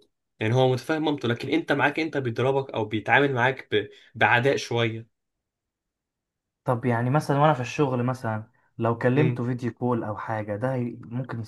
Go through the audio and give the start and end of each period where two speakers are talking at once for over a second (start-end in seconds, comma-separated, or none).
none